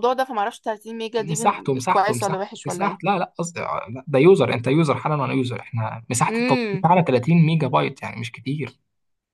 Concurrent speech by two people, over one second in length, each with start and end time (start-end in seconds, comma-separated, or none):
1.2-3.1